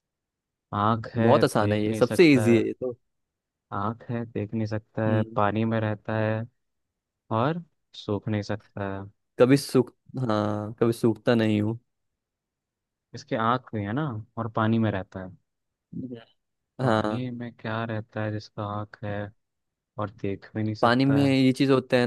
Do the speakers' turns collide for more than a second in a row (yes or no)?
yes